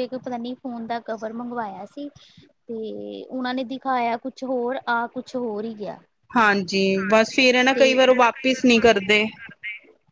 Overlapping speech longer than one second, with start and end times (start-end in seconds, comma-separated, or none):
none